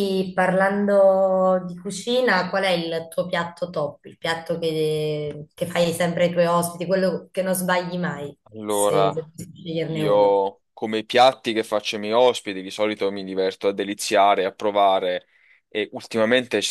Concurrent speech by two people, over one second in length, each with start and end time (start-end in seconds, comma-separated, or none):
none